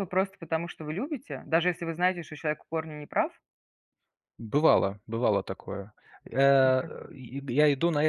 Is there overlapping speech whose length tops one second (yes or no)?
no